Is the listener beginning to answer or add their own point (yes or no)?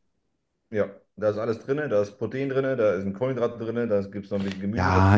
yes